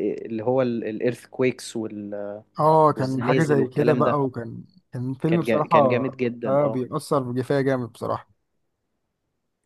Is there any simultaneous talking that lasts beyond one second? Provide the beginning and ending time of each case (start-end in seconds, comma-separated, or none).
3.0-4.2